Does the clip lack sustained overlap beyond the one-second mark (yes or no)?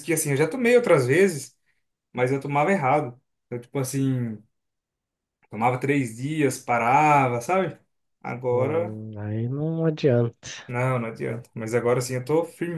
yes